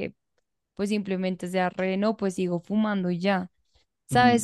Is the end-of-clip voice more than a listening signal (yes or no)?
no